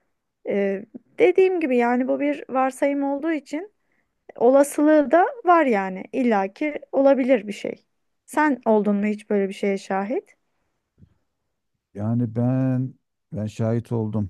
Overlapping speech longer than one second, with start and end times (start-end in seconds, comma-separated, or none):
none